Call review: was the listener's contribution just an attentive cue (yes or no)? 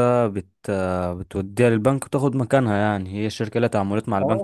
no